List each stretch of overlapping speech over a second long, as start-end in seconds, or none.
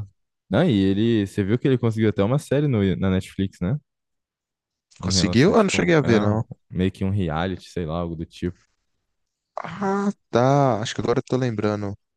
5.0-6.4